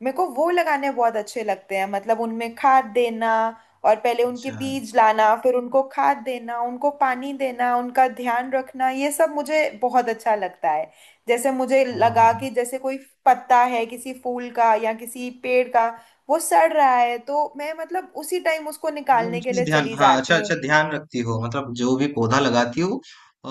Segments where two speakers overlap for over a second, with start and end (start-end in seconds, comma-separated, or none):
19.1-20.5